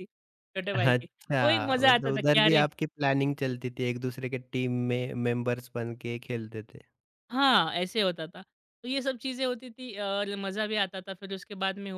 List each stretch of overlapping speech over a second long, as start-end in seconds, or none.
0.7-2.6